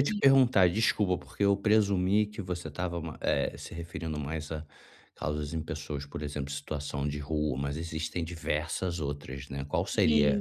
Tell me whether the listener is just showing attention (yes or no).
yes